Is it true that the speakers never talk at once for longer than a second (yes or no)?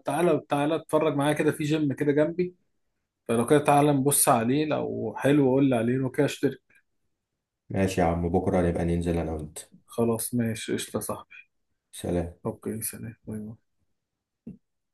yes